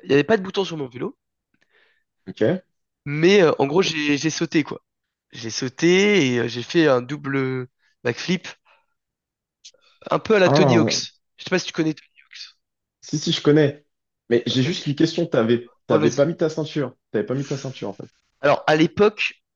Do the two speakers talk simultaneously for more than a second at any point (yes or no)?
no